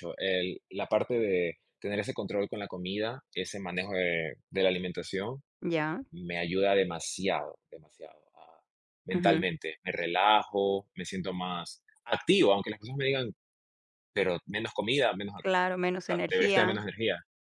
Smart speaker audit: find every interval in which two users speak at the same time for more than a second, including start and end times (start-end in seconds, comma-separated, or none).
15.4-16.8